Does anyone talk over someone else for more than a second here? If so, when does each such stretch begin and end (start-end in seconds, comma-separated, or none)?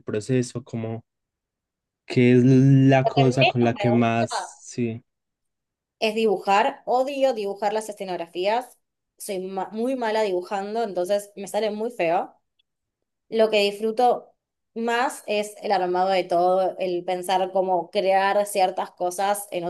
3.0-4.6